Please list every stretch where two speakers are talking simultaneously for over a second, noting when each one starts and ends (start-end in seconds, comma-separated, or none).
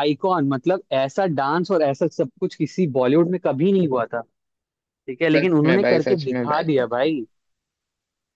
5.3-7.1